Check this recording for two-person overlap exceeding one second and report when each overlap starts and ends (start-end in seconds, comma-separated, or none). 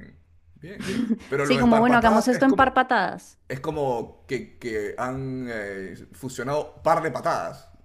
1.4-2.8